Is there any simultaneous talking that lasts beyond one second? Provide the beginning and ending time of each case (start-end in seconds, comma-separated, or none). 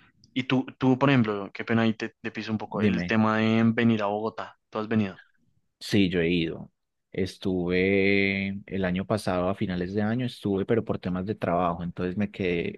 none